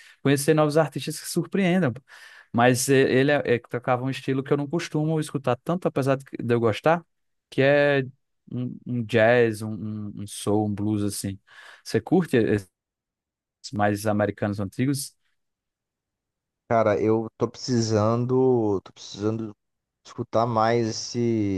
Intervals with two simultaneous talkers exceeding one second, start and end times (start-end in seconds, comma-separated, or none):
none